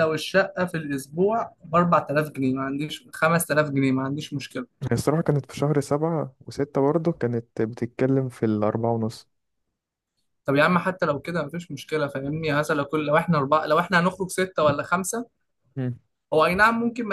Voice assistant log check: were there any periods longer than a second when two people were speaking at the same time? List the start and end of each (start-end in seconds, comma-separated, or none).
none